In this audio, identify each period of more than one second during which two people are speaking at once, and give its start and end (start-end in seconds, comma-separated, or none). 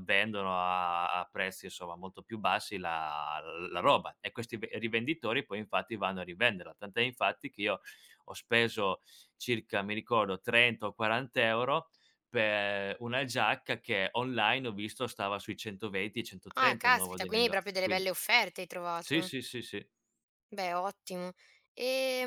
16.6-18.1